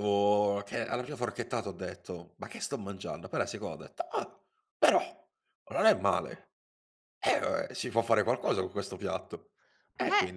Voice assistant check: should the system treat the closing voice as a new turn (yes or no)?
yes